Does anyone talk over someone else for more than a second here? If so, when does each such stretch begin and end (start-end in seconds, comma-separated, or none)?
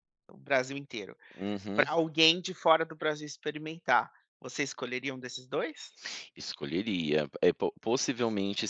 none